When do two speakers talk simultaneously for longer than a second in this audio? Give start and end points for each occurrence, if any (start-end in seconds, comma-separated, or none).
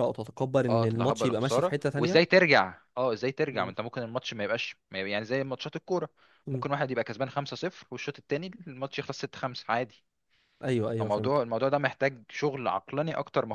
0.7-2.2